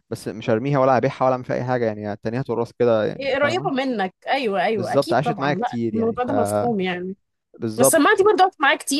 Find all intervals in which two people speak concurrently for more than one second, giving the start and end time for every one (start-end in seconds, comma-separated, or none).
4.8-6.3